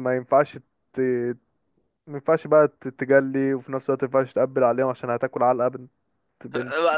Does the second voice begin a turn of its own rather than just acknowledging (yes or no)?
yes